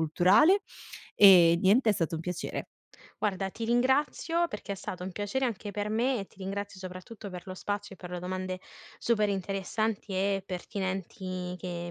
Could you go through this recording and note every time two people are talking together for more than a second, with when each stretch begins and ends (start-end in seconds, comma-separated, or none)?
none